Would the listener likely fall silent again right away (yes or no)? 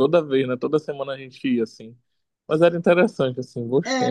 no